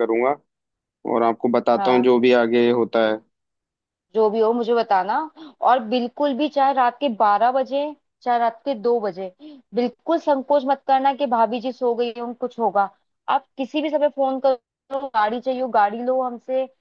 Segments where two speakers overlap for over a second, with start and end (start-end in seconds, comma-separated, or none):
none